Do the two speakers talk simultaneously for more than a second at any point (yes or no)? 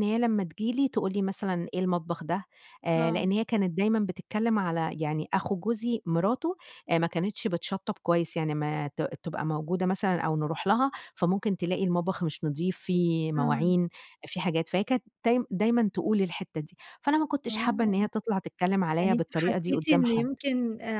yes